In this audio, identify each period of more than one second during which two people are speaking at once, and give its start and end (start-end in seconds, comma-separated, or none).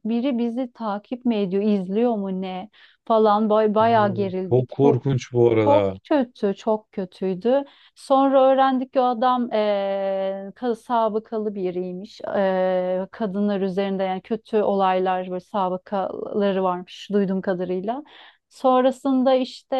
3.8-5.0